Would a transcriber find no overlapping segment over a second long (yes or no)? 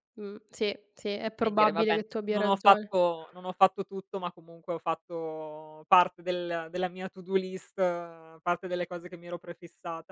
no